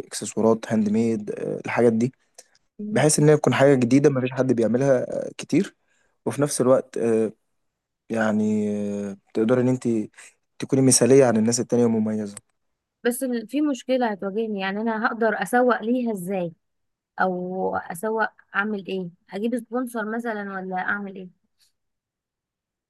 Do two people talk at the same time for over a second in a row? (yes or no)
no